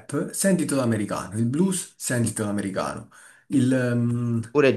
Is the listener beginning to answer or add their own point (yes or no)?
yes